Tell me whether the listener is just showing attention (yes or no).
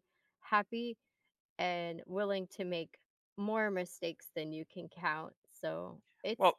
yes